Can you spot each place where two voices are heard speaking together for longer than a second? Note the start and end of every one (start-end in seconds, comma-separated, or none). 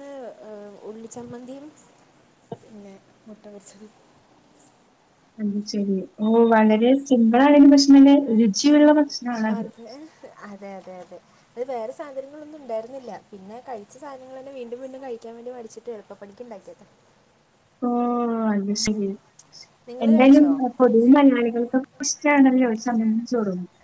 none